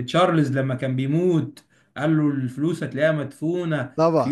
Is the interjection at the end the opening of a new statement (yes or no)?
yes